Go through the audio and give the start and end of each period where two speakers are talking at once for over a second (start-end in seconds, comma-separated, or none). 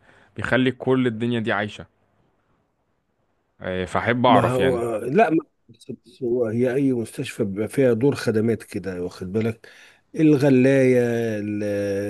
none